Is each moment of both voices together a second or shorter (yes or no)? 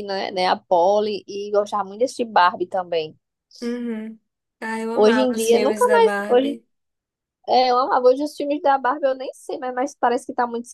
no